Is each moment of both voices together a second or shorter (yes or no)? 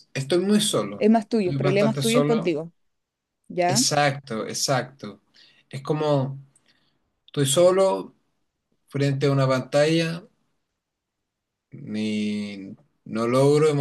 no